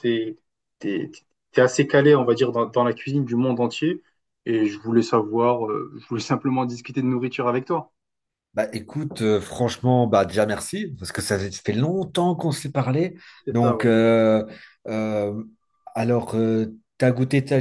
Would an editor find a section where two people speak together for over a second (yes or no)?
no